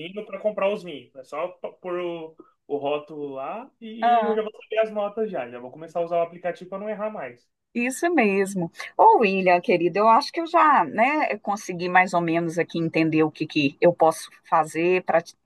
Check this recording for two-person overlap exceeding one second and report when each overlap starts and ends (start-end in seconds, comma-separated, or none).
none